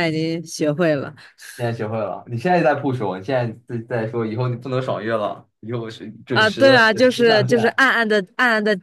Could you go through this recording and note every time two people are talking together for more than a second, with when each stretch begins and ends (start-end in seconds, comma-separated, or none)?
6.3-7.8